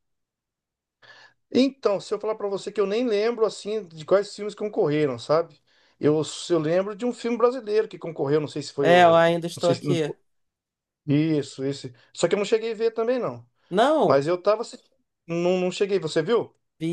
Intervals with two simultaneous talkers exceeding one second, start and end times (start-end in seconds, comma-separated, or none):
8.8-10.1